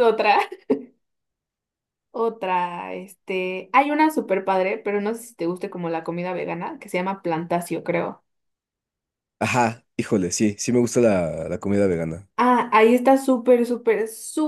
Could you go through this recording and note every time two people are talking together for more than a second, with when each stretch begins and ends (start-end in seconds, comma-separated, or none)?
none